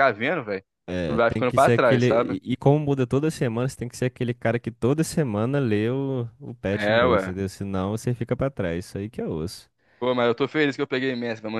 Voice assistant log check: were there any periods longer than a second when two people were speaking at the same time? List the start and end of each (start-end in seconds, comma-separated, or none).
1.1-2.4